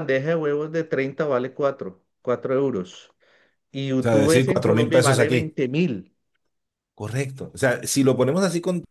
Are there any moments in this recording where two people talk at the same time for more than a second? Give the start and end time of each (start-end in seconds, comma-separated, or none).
4.0-5.6